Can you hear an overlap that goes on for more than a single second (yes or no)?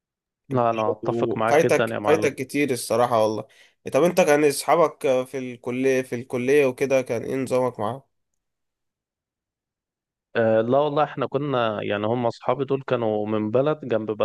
yes